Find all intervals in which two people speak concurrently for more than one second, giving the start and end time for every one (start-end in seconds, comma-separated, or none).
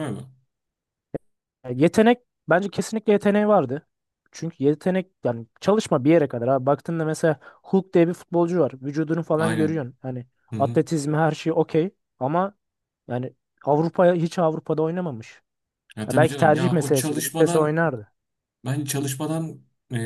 16.1-17.8